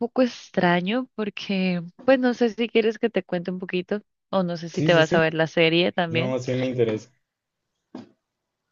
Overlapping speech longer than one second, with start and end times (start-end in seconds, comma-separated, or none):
none